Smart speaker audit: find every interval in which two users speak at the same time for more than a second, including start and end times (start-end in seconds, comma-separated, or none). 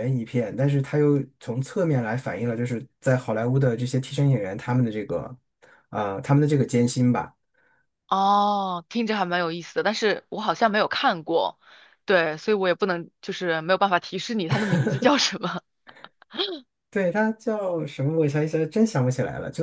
none